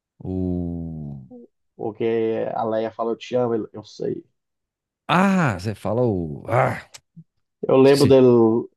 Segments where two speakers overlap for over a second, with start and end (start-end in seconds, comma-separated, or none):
none